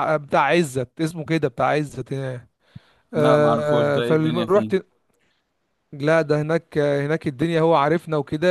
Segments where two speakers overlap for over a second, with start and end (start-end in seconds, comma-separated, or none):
3.2-4.7